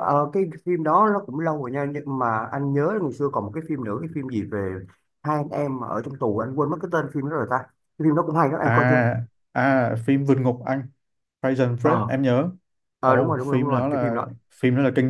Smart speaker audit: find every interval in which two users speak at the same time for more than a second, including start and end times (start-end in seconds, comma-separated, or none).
13.0-14.3